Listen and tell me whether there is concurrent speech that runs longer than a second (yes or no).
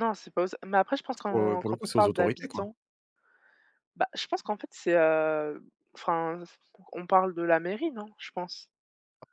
yes